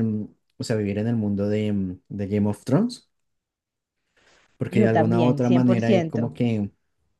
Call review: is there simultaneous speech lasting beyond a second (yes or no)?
yes